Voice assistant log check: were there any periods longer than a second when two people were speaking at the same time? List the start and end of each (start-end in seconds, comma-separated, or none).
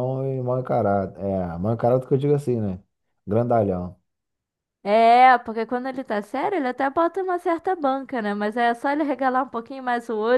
none